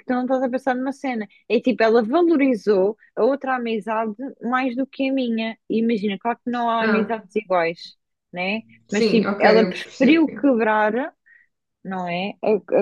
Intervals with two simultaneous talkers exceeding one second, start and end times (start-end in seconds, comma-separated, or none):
8.9-10.4